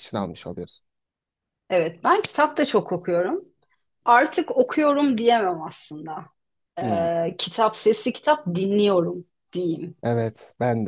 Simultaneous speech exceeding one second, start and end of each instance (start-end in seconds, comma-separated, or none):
none